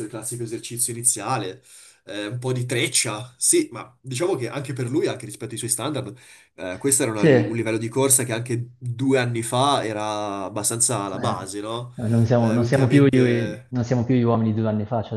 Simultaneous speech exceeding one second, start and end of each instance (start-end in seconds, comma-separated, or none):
12.4-13.7